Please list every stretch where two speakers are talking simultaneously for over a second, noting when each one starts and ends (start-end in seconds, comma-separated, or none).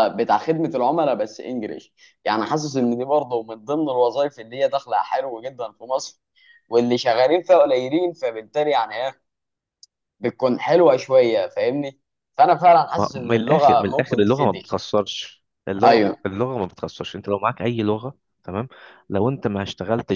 13.0-14.8